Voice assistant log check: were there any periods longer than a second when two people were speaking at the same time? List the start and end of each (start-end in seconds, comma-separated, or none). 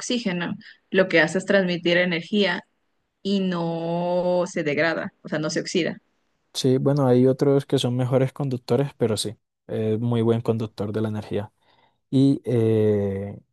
none